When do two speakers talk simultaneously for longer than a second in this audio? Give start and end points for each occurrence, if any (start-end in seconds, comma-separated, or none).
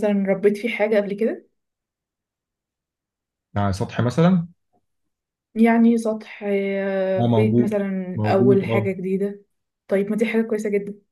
7.2-8.9